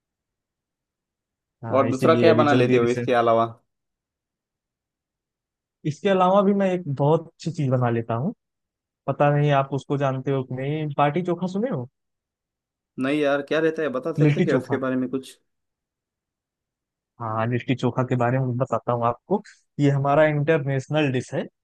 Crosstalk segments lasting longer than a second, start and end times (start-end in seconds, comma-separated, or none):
1.7-3.1